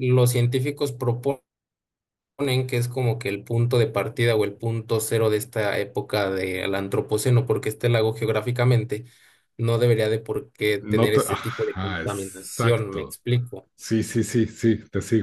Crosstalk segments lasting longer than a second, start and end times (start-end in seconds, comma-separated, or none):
10.8-13.2